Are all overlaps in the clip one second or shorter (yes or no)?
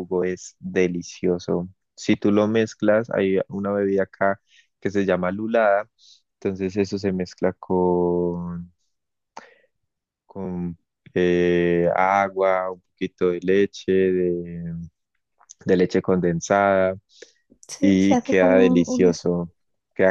no